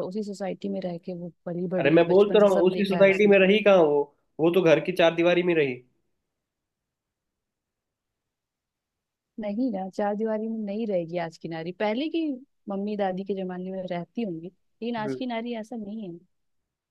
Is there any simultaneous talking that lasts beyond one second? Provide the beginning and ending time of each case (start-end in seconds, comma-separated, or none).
1.8-3.3